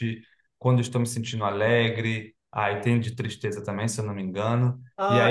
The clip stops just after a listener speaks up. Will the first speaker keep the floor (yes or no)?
no